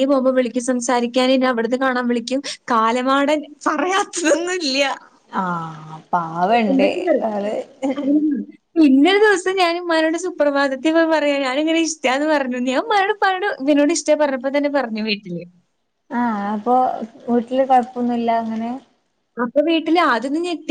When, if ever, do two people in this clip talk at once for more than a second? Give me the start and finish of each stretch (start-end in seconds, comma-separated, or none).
none